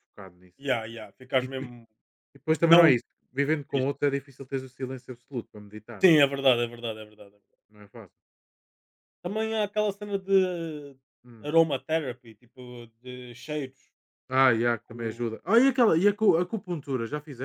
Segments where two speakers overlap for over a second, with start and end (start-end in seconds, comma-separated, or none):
none